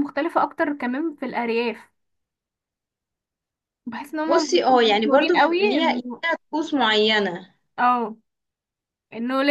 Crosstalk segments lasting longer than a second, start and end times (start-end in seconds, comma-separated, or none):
4.3-6.2